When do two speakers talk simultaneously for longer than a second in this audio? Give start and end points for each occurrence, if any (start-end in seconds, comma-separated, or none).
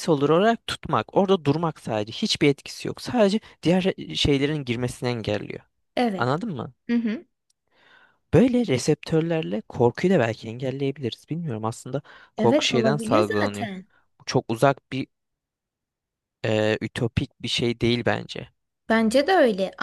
12.4-13.7